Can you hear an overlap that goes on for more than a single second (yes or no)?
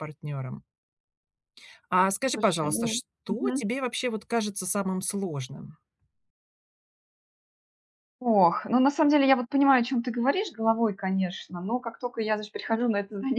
yes